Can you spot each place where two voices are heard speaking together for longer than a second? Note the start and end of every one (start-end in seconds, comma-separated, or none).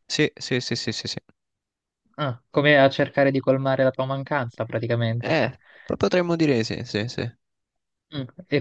none